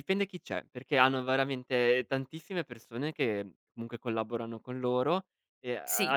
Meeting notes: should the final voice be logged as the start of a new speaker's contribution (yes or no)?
yes